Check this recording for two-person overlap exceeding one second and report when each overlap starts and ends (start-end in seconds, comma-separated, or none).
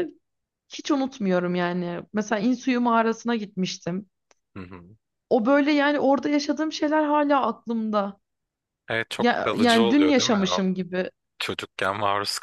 9.2-10.6